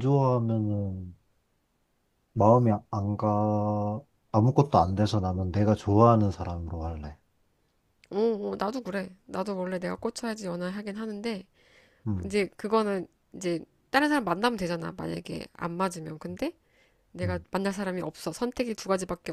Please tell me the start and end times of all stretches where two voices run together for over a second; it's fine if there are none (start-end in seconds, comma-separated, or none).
none